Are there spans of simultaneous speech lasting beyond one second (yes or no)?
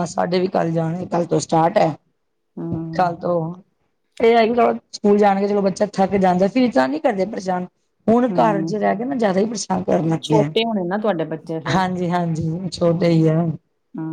no